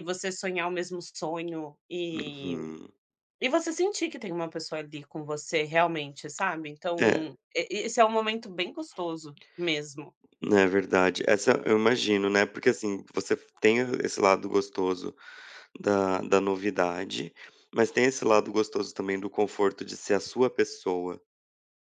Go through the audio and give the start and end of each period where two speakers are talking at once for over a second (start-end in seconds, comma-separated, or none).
none